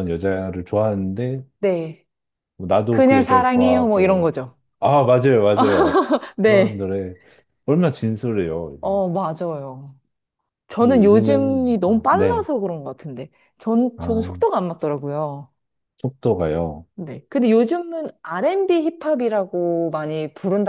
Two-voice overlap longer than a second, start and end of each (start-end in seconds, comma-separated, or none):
2.9-4.3, 10.8-12.4